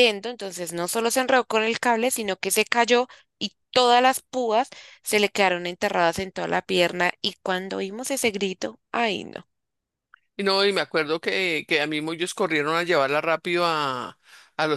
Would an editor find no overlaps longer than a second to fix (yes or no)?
yes